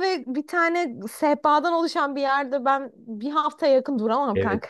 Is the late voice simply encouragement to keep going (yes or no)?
no